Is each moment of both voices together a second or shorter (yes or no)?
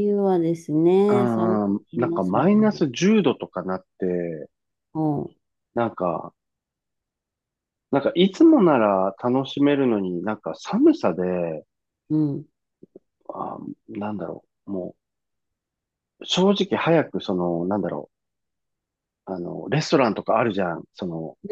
no